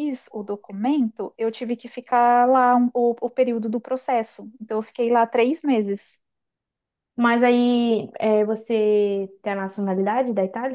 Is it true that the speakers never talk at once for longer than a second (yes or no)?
yes